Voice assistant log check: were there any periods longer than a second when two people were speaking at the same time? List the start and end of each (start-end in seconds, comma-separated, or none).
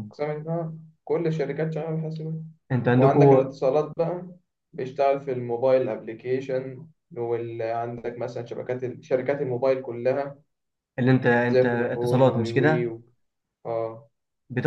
11.5-12.9